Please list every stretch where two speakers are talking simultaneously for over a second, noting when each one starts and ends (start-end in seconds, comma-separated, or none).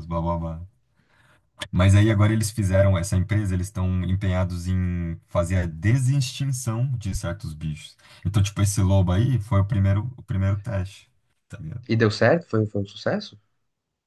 none